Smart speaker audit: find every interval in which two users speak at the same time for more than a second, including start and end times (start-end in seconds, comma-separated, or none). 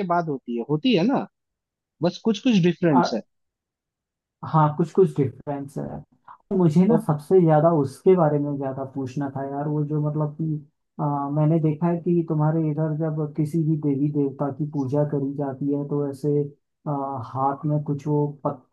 none